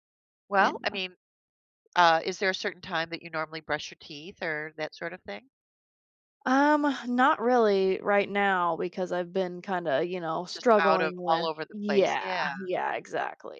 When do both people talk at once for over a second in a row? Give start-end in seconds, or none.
10.5-12.5